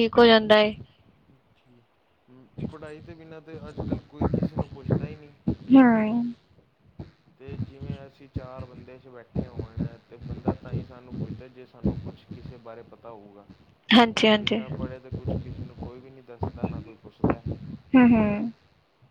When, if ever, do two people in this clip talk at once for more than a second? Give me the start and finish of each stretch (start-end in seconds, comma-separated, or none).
none